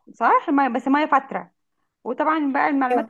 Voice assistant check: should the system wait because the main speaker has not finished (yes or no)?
yes